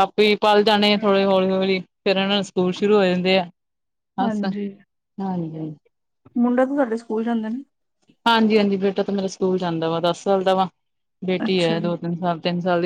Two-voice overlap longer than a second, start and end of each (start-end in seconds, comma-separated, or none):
none